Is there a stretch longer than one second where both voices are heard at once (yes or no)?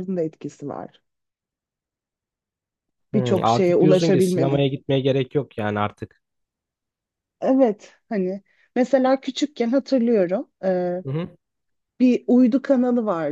yes